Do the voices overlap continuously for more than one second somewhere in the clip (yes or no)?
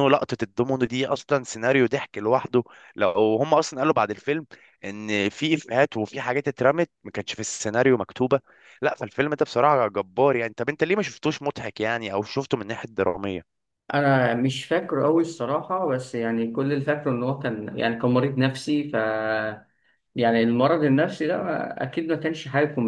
no